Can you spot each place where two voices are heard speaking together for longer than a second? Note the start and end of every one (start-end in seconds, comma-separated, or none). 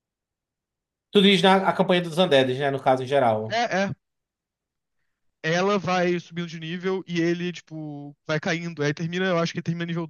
none